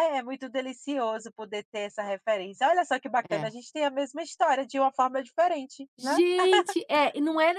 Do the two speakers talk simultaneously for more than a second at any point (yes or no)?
no